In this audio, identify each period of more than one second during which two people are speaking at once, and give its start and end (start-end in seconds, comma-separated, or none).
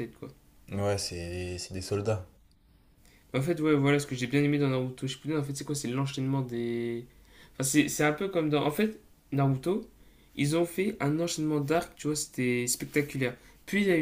none